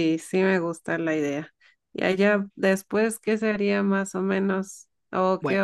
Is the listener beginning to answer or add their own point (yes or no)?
no